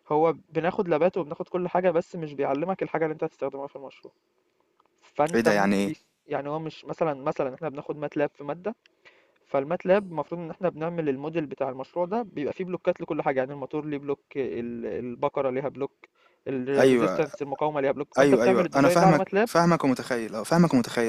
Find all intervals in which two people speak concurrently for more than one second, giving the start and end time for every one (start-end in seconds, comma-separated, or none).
18.2-19.5